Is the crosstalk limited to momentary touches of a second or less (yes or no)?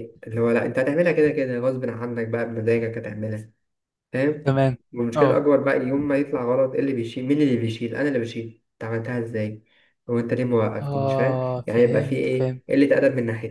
no